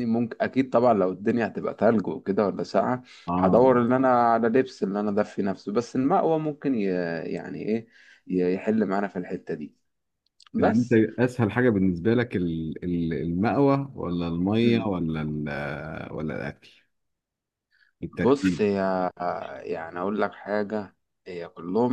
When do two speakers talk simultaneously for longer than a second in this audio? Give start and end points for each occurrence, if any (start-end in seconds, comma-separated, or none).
none